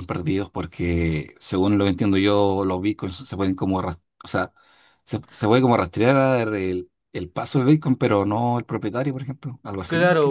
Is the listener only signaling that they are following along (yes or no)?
no